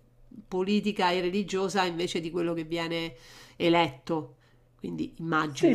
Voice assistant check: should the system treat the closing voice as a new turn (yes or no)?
yes